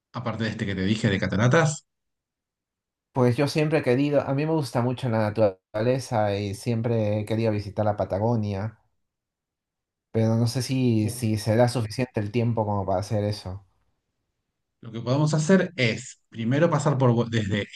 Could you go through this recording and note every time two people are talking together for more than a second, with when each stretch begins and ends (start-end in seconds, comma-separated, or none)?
none